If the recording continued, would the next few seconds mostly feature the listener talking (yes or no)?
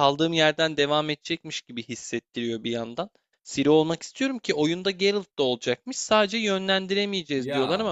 no